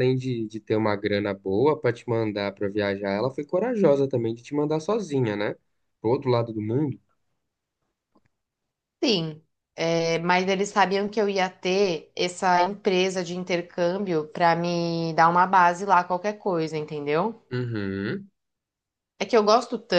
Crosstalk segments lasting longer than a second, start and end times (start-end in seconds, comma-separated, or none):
none